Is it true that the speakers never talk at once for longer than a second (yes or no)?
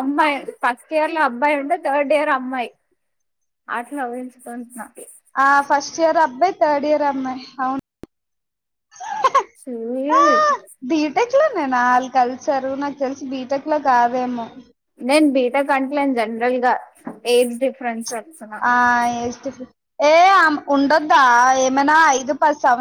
yes